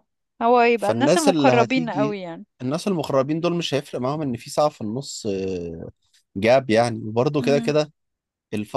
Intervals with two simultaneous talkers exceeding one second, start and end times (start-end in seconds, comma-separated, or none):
0.8-2.2